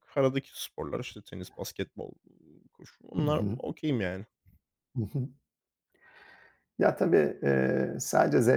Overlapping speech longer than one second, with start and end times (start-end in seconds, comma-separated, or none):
none